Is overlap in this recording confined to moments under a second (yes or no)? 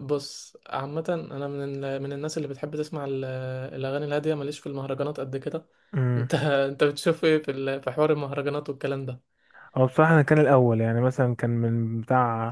yes